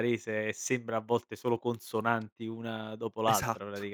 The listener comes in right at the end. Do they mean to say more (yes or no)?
yes